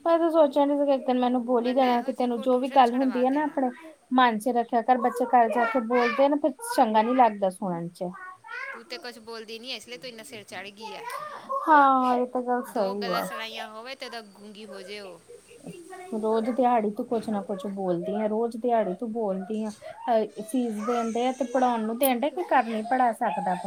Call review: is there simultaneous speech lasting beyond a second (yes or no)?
yes